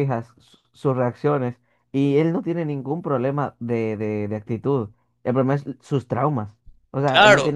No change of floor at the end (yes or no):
yes